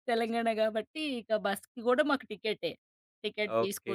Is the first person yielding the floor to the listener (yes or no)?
yes